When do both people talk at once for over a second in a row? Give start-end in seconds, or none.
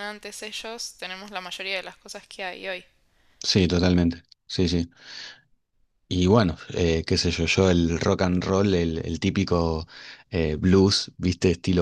none